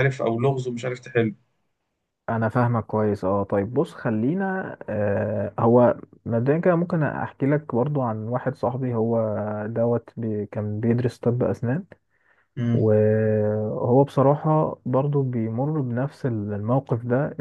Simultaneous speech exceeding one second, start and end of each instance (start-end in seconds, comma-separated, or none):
none